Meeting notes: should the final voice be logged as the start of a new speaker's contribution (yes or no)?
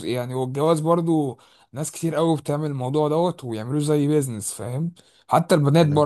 no